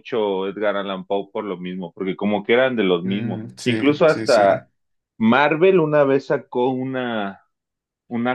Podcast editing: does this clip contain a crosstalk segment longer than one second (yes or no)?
yes